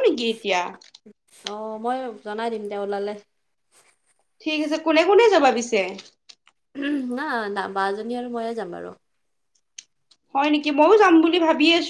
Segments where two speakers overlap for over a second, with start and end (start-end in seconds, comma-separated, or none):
none